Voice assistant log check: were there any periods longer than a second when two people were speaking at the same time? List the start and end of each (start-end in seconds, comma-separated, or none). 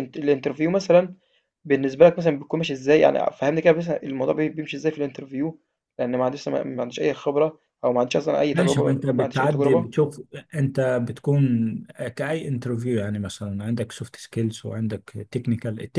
8.5-9.9